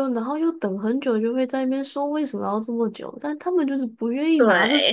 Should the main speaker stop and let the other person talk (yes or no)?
no